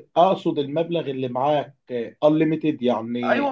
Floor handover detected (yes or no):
yes